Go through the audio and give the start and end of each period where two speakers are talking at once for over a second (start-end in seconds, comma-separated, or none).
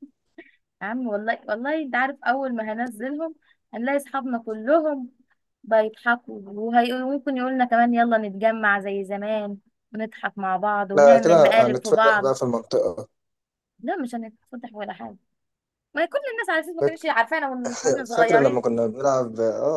10.9-12.3